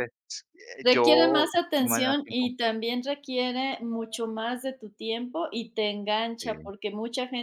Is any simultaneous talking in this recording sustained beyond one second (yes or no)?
yes